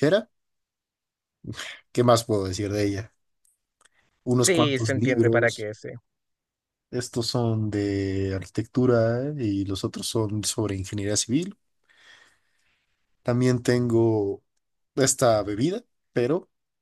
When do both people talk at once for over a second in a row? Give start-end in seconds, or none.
4.4-5.7